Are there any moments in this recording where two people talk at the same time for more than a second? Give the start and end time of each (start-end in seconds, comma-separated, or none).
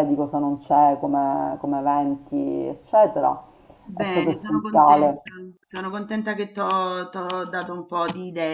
4.0-5.2